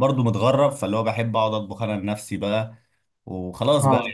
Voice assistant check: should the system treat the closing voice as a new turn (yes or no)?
no